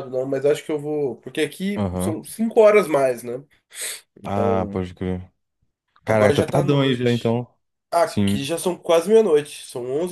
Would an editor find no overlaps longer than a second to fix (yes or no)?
no